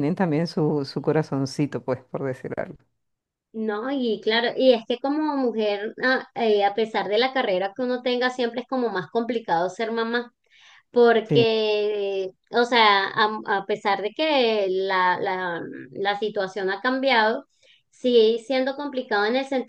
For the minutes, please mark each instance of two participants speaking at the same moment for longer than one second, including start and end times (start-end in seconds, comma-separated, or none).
none